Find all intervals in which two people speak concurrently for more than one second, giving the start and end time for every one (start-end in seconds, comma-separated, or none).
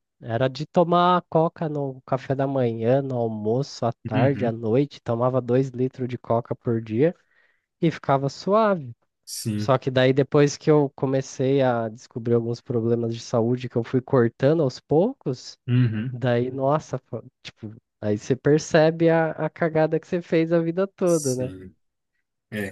none